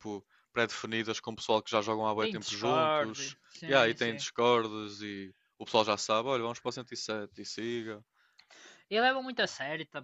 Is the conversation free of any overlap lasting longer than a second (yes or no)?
no